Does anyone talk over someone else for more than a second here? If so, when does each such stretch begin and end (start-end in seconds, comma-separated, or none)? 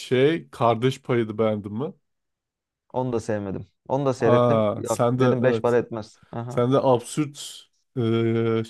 4.2-5.8